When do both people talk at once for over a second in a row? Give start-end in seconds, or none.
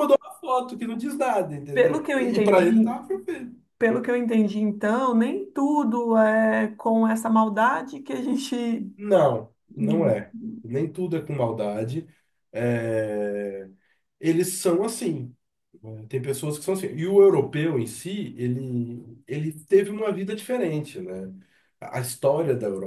1.7-3.0